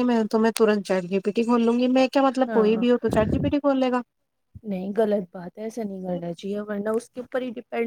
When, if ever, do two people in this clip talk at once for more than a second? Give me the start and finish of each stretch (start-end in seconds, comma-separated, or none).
none